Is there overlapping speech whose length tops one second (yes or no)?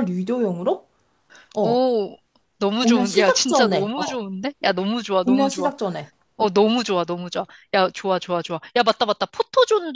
yes